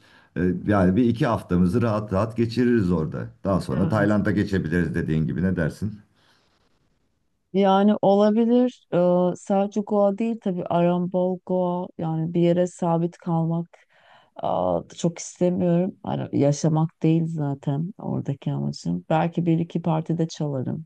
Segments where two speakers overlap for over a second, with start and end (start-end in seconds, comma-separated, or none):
none